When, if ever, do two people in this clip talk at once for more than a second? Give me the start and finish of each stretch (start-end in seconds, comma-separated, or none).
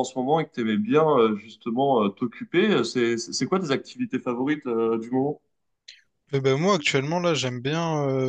none